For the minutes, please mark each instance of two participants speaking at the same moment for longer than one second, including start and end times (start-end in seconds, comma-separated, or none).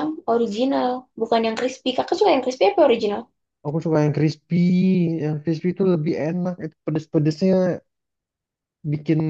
none